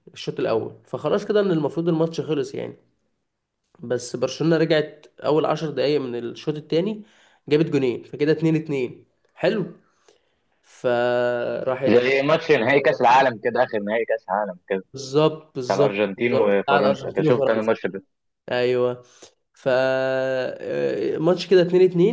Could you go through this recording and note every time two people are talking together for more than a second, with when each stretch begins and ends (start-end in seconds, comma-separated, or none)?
15.7-17.7